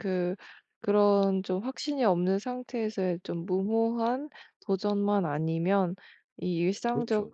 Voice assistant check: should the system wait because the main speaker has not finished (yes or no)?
yes